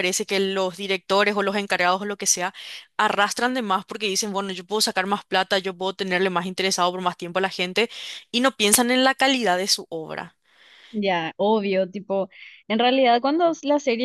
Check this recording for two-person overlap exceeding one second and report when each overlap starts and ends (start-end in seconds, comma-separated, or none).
none